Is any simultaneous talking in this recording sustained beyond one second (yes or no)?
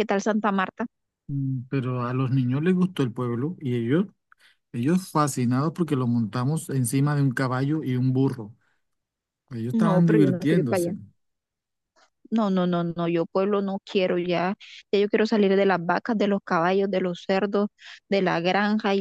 yes